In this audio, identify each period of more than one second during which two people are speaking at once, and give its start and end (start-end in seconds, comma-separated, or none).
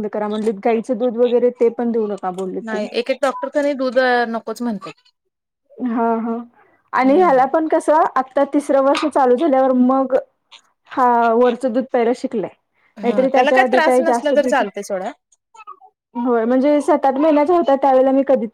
13.1-14.6